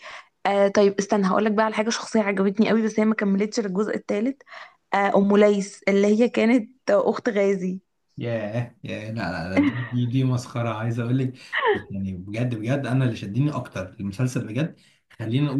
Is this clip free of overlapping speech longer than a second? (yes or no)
yes